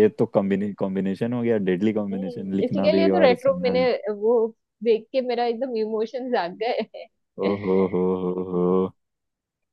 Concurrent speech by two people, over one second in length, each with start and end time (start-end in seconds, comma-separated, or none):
2.0-3.8